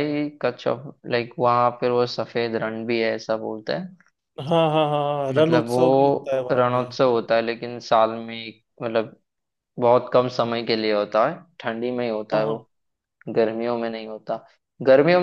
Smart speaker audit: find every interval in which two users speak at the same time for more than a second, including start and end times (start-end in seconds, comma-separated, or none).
5.4-6.8